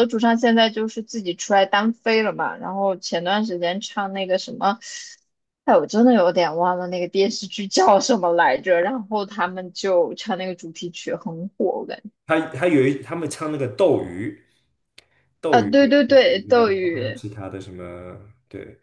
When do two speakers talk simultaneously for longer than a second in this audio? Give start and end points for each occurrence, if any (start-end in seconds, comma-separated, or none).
15.5-17.2